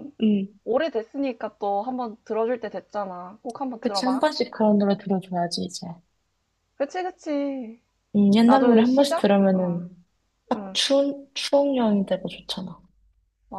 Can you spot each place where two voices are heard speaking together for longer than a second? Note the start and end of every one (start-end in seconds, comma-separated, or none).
8.4-9.8